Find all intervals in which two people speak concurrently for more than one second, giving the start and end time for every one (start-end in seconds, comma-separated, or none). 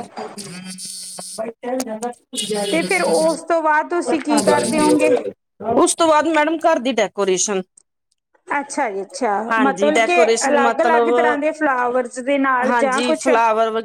9.5-11.5